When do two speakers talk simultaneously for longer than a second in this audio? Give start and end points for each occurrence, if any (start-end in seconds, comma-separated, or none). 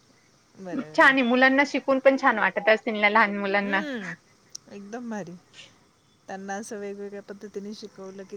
none